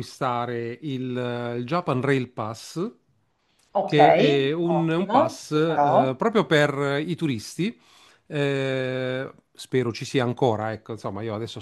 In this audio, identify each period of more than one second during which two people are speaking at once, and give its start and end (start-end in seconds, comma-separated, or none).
4.6-6.1